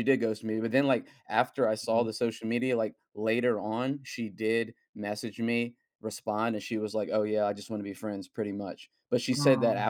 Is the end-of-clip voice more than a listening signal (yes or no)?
no